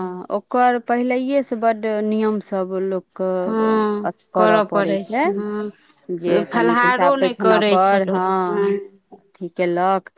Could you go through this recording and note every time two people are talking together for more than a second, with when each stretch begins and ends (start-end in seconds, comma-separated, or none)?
6.2-8.2